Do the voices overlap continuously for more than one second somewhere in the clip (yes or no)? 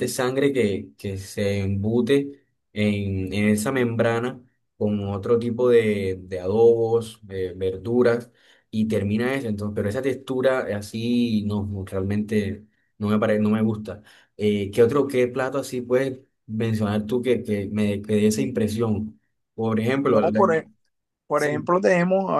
no